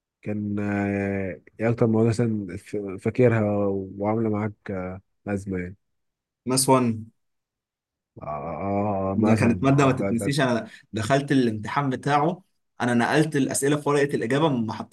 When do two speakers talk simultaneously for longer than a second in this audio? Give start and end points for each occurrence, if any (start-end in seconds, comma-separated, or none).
9.1-10.3